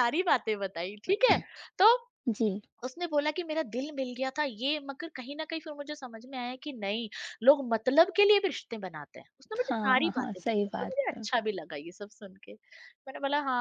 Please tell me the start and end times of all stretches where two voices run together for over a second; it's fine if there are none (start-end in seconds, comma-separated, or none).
9.6-11.3